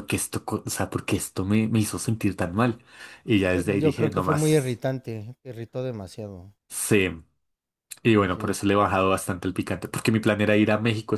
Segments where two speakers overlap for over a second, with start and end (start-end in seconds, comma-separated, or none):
3.5-4.8